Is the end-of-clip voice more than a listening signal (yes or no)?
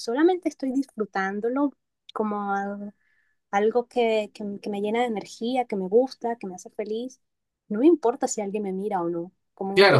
yes